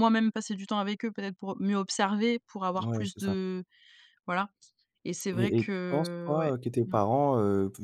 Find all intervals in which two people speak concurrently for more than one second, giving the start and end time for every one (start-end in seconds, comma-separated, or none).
5.3-7.0